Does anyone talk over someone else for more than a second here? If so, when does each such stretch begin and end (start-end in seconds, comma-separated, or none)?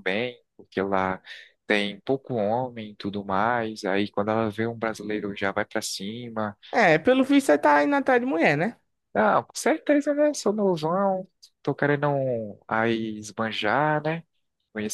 none